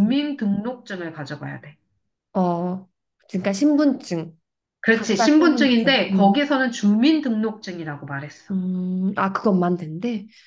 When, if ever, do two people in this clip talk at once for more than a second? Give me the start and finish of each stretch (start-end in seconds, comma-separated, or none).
4.9-6.4